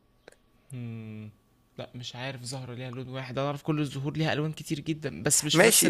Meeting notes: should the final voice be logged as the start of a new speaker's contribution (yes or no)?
yes